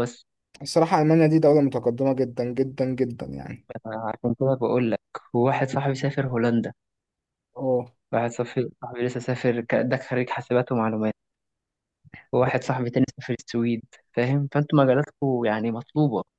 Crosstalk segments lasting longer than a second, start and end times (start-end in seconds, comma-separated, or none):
none